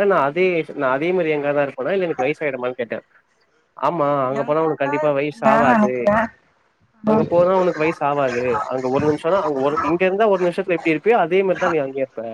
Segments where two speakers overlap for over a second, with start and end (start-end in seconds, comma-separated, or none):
4.4-5.9